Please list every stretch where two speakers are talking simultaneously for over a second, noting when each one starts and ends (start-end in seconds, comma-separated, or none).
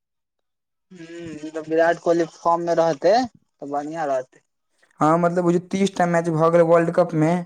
none